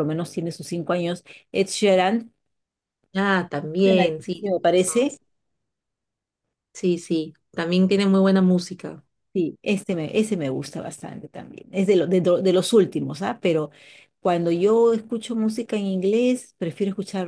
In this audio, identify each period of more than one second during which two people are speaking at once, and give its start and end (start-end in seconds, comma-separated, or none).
3.8-5.1